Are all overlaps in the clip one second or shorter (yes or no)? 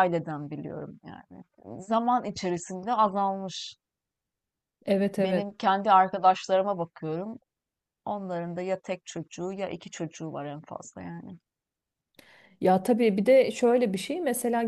yes